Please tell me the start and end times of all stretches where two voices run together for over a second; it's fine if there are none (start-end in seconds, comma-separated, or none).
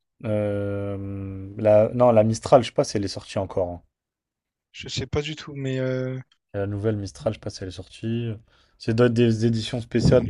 none